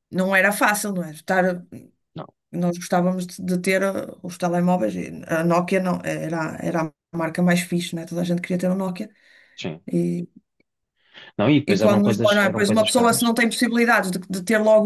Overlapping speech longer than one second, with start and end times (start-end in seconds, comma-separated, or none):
11.7-13.2